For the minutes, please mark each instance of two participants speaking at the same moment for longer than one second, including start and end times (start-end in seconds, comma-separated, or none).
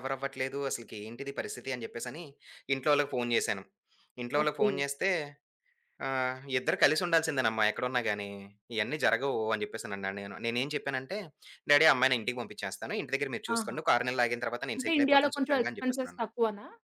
14.8-16.2